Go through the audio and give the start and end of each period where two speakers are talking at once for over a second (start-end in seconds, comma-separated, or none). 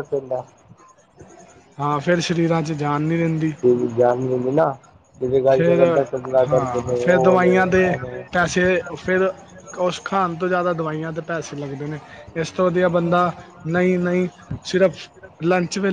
6.5-7.9